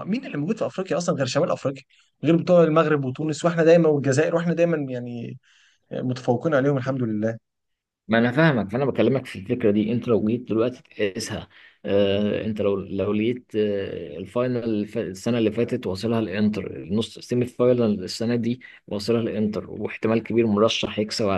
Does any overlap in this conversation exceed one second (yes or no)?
no